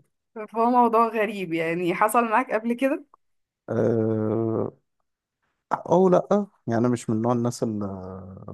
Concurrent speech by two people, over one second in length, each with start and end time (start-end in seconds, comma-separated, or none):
none